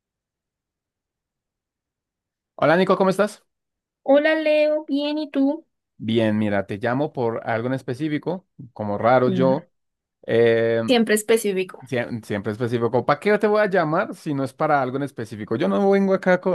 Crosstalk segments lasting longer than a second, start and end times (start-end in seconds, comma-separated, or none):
none